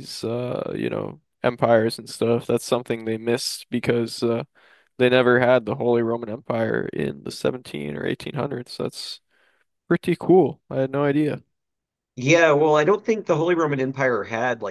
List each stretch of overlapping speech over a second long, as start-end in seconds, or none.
none